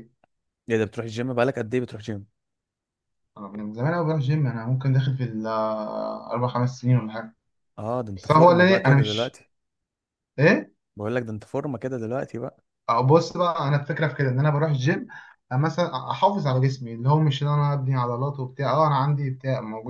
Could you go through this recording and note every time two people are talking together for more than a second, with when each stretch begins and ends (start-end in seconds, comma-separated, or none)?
8.2-9.4